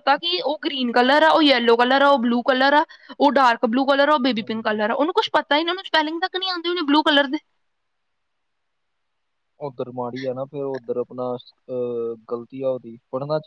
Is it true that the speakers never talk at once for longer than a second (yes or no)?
yes